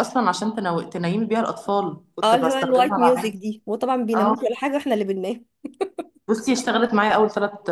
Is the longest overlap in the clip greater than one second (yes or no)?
yes